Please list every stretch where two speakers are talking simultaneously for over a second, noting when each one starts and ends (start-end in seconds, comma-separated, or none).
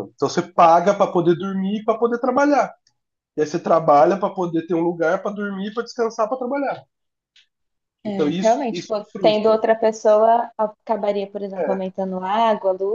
8.1-9.6